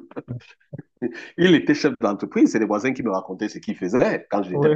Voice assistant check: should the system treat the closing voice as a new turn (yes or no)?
no